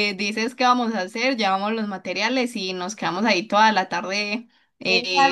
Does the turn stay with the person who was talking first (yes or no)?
no